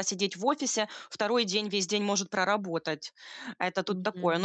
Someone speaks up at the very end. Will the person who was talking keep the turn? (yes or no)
yes